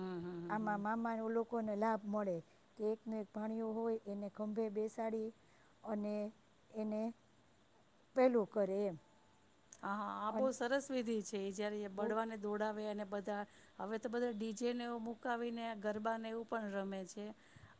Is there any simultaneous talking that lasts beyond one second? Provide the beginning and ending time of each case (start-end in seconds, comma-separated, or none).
none